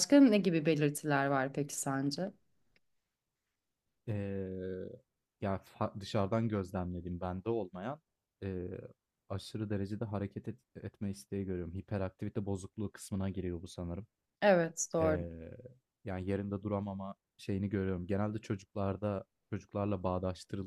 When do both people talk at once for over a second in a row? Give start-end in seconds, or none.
none